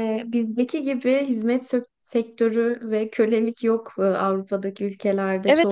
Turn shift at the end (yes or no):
yes